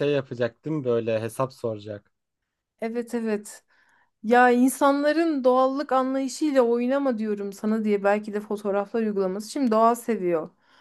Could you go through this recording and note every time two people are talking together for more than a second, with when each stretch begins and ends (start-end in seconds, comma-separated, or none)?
none